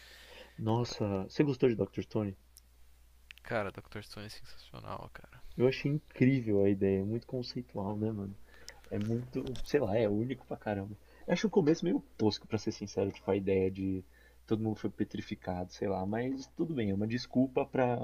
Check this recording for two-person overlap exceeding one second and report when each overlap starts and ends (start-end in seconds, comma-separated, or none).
none